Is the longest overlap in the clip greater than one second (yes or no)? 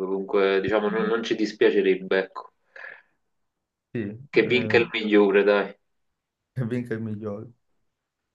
no